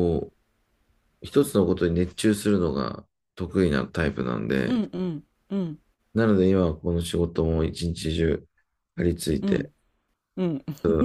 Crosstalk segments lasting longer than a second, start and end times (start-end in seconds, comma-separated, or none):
none